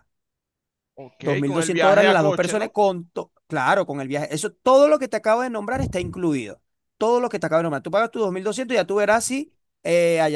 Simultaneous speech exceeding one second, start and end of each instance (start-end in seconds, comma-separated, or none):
1.2-2.7